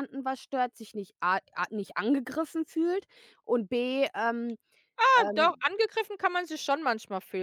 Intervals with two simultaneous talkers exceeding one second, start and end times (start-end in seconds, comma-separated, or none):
none